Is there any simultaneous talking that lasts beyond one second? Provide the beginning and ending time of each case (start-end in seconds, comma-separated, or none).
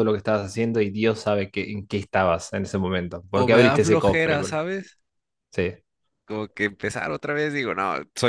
3.3-4.6